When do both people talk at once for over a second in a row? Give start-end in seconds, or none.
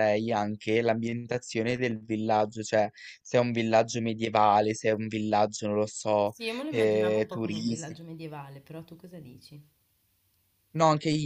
6.2-8.0